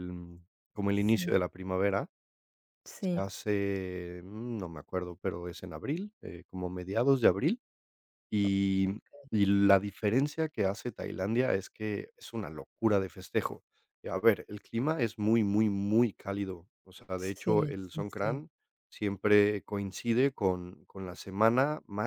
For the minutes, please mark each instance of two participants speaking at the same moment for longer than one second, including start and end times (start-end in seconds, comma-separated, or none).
17.2-18.4